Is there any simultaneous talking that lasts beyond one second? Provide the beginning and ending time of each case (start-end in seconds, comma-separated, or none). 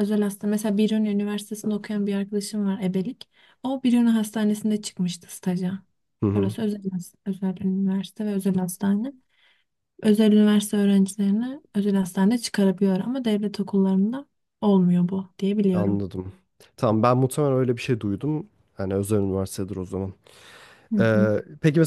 none